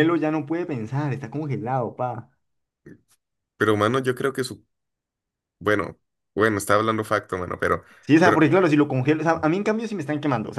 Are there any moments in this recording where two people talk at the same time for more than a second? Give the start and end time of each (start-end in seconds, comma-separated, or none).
none